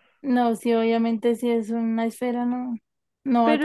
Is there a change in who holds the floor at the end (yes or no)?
yes